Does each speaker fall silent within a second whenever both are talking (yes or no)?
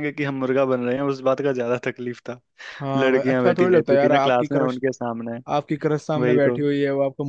no